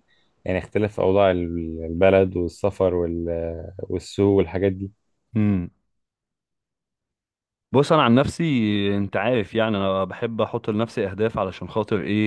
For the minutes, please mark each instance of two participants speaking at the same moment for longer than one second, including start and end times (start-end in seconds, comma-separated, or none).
none